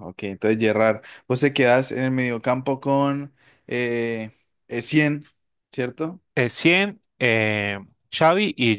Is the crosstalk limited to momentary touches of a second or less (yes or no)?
yes